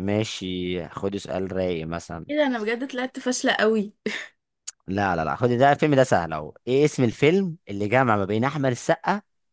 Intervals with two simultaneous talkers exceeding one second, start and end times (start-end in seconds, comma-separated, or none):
none